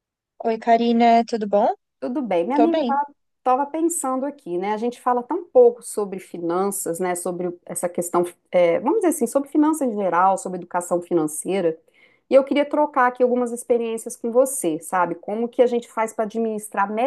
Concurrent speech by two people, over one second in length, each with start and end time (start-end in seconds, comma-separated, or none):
none